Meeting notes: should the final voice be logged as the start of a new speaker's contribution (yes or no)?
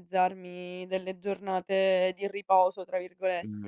yes